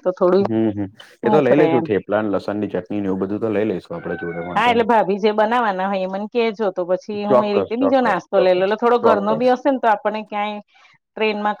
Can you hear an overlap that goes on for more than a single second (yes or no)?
yes